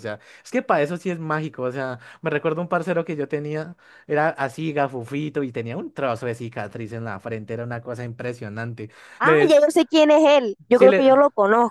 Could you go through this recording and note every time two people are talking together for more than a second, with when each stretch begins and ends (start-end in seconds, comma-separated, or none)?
none